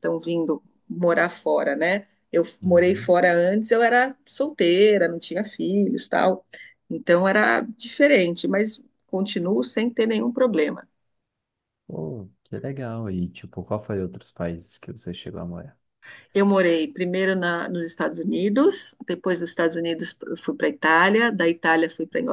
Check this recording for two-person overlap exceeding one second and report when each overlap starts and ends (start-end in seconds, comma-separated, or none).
none